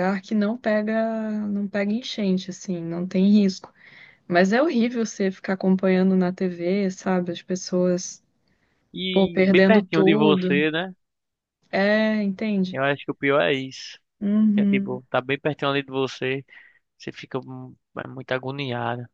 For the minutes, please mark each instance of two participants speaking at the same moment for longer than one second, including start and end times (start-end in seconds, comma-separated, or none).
9.1-10.7